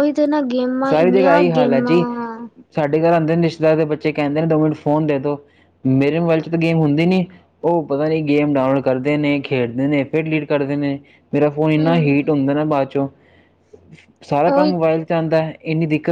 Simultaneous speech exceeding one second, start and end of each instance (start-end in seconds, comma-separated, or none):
0.9-2.1